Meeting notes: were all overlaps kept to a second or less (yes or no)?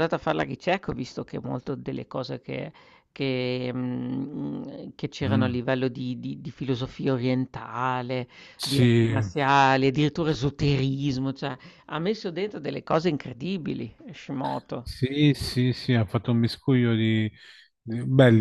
yes